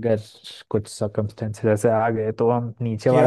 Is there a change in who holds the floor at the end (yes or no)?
yes